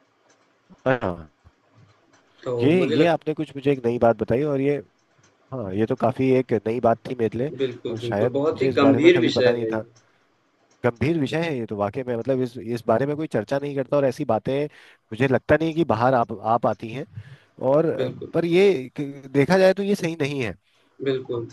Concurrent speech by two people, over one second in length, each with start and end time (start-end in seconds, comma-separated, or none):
7.6-9.8